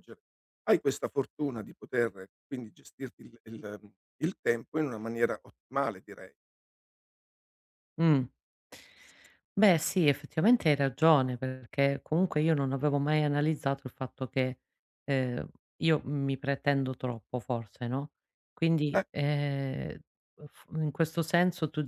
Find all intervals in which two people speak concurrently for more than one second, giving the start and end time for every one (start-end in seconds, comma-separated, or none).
none